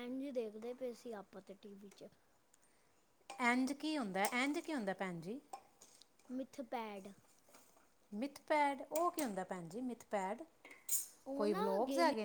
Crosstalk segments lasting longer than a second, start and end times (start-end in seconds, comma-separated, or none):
none